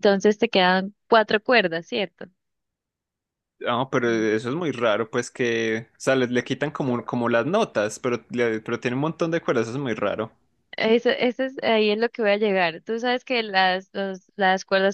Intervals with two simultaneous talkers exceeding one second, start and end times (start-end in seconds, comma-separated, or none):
none